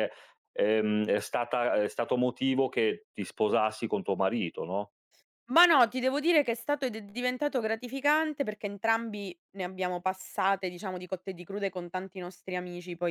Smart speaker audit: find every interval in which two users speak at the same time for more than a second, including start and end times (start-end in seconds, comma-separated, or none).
none